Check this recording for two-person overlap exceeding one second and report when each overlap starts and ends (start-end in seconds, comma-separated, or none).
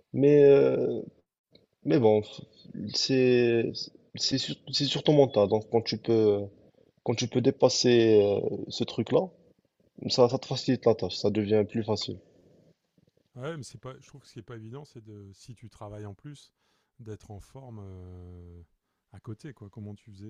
none